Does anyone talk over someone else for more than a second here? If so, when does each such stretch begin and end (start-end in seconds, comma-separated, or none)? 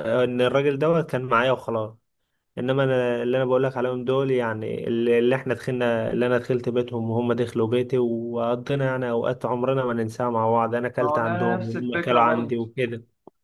11.0-12.5